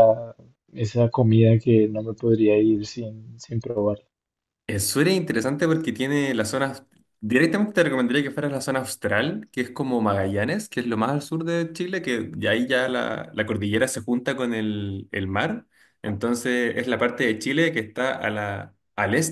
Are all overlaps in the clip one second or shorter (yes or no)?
yes